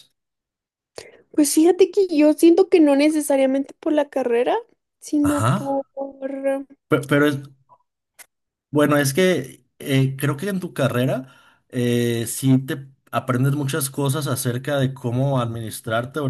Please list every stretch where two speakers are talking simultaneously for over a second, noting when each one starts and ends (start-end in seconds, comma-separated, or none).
none